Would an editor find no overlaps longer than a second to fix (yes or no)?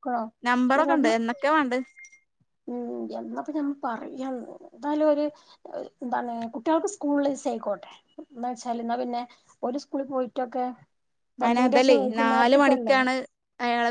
no